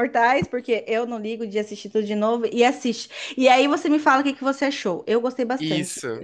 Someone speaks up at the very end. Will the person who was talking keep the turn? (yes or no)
no